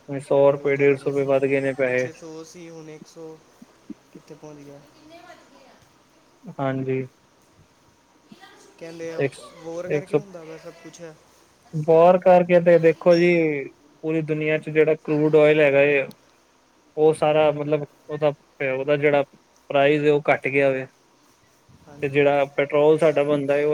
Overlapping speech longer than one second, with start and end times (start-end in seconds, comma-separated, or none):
0.6-2.1